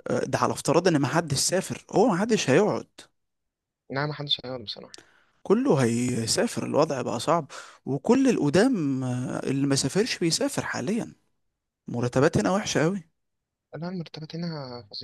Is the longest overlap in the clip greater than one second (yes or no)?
no